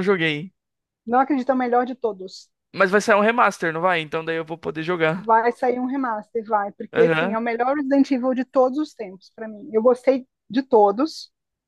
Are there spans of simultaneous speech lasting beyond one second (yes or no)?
no